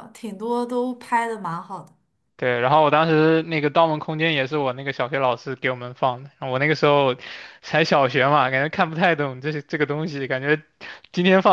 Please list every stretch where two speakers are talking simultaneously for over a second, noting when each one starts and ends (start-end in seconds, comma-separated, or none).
none